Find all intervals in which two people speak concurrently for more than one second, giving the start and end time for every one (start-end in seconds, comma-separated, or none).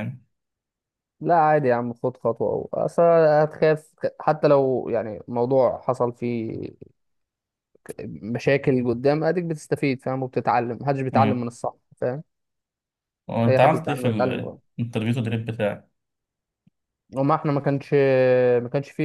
none